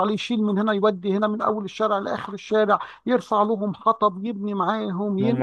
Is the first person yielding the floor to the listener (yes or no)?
yes